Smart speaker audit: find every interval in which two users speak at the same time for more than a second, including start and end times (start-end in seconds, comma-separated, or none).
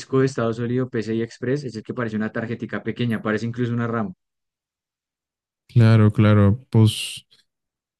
none